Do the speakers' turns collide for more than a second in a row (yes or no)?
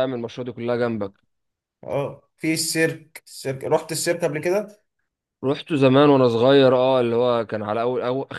no